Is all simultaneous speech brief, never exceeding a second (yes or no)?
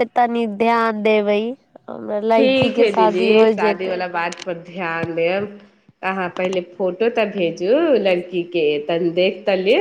no